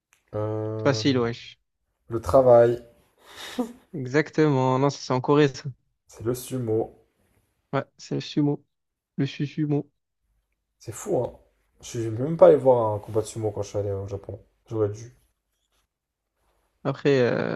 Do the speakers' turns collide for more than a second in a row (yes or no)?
no